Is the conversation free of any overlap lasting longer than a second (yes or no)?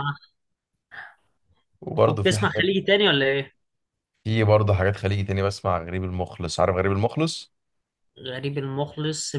yes